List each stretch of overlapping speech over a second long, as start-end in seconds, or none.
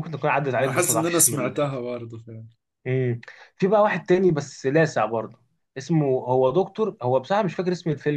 0.6-1.8